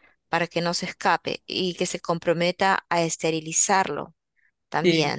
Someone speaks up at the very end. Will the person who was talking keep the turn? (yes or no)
no